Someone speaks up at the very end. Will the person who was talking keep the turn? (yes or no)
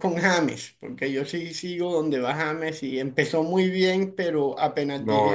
yes